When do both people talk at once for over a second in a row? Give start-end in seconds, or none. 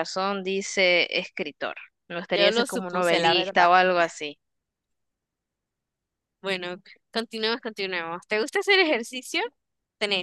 2.3-3.7